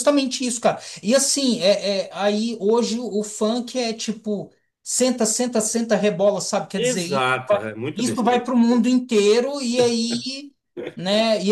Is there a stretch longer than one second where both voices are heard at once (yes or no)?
yes